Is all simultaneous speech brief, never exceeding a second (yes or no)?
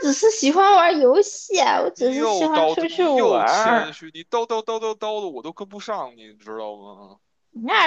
no